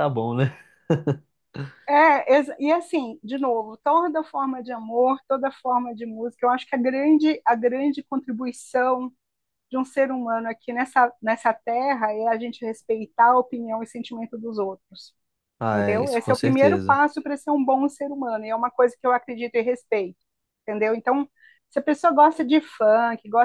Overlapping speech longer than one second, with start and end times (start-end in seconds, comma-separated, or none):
15.7-17.0